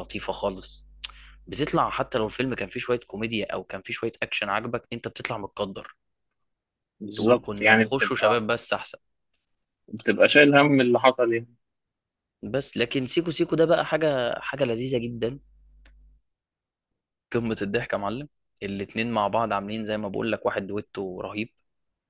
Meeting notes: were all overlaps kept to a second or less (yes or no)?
no